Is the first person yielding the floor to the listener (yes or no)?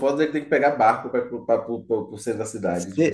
yes